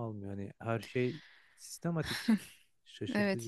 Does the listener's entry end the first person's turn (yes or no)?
yes